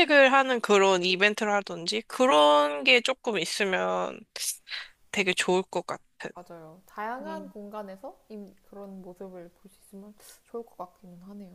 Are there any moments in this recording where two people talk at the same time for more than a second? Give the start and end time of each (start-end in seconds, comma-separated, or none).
none